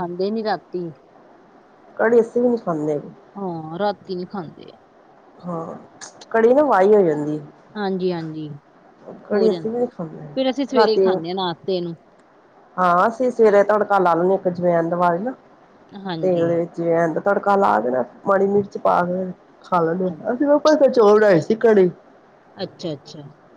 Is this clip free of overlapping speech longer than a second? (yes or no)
yes